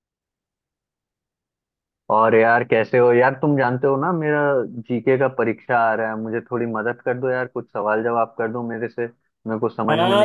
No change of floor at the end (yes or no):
no